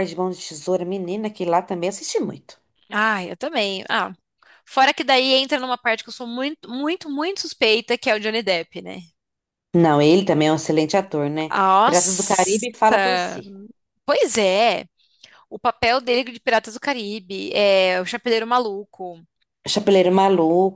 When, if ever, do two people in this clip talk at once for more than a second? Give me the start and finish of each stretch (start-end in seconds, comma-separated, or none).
11.5-13.0